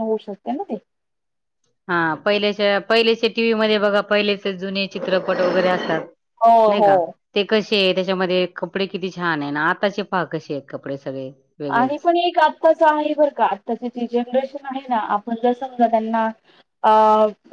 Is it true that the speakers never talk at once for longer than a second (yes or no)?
yes